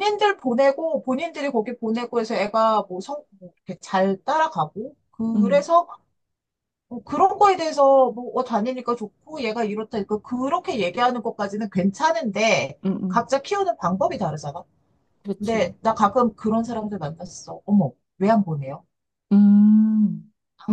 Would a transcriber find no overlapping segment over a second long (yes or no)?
yes